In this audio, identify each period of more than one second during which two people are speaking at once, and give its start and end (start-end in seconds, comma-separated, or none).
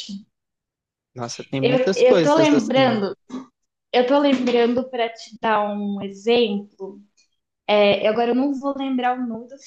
1.6-3.0